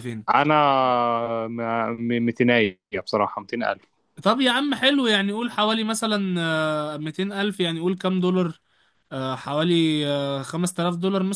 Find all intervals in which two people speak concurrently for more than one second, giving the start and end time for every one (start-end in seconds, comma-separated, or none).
none